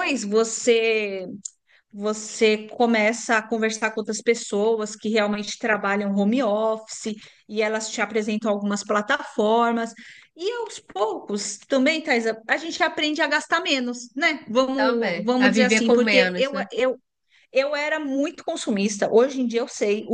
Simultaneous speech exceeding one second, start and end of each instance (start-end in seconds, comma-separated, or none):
14.8-16.7